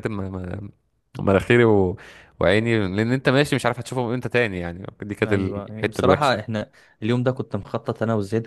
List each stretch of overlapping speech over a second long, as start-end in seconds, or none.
5.2-6.4